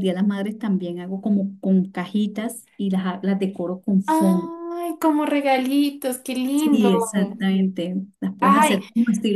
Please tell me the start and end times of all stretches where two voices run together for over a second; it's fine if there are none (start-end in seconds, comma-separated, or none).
none